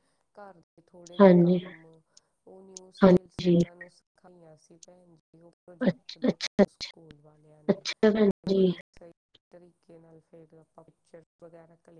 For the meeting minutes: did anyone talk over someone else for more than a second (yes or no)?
no